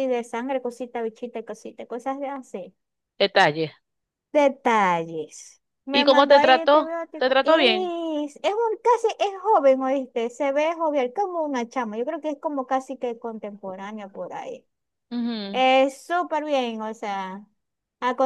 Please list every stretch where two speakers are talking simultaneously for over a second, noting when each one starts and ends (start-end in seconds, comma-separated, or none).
5.9-7.9